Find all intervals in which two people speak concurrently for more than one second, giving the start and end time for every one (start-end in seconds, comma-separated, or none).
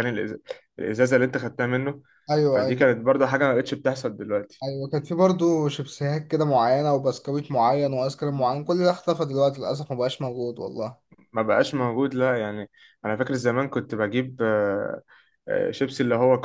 none